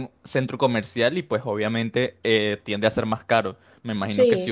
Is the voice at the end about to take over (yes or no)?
no